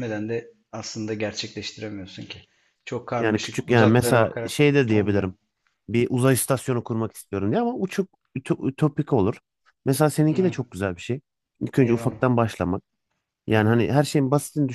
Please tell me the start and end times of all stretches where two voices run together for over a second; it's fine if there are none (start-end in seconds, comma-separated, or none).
3.2-5.3